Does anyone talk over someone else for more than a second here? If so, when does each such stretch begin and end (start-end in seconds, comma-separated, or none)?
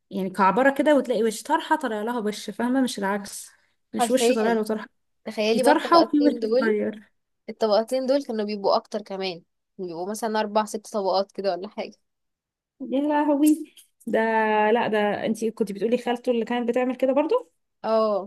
5.5-6.8